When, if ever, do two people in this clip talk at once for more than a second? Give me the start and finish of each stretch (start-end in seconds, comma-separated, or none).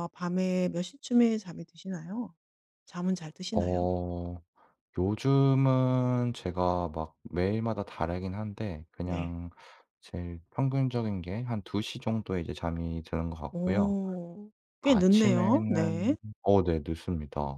14.8-16.2